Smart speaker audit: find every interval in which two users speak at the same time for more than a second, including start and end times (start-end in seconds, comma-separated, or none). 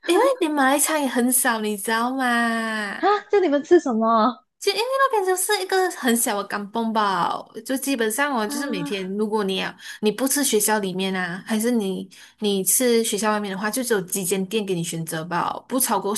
none